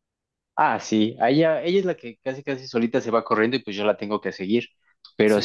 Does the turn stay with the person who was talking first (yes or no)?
yes